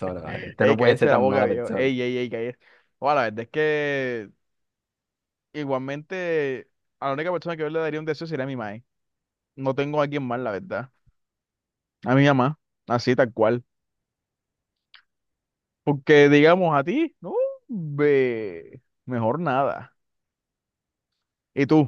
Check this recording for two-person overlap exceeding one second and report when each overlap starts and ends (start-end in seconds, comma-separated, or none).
0.6-1.9